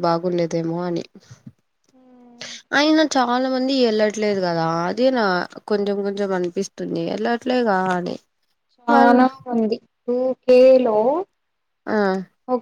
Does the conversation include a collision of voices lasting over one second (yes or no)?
no